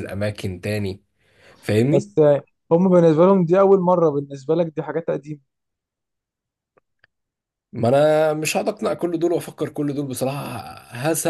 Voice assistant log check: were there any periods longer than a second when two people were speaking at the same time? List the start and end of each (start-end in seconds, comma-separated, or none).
none